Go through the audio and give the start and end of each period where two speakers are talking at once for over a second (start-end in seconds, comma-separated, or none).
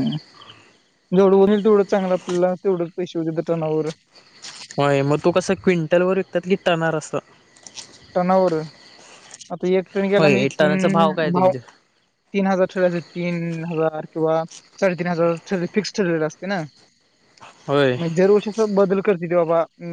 none